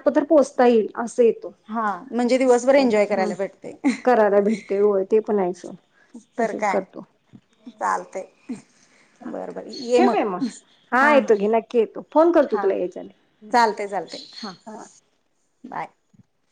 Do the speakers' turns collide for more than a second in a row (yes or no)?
no